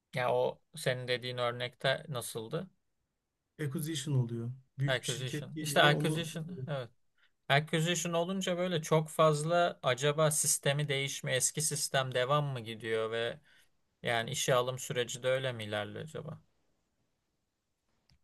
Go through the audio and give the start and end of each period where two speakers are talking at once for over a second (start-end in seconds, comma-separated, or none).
4.9-6.3